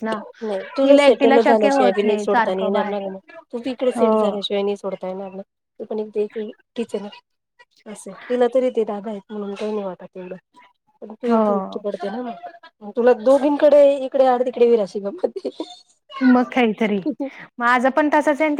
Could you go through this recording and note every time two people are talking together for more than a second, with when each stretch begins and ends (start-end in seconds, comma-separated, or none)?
0.8-2.9